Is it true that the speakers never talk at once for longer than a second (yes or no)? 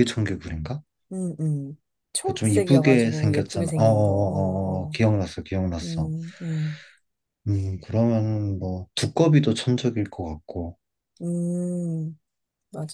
no